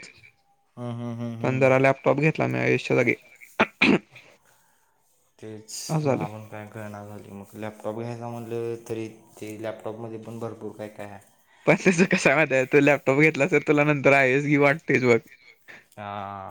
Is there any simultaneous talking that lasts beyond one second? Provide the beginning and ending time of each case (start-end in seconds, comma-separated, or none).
none